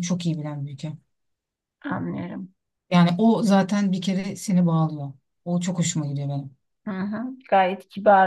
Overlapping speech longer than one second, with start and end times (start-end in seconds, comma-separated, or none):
none